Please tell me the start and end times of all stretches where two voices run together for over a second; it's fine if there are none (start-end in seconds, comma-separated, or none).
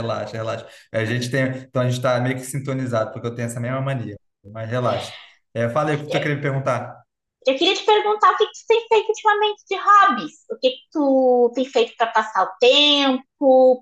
none